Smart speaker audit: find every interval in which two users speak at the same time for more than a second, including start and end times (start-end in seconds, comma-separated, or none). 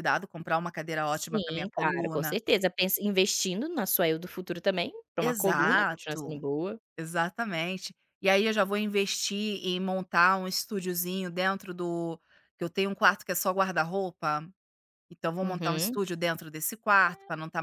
1.1-2.4, 5.2-6.4